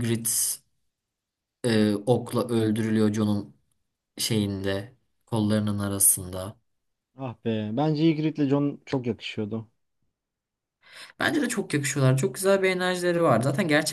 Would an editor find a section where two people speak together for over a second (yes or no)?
no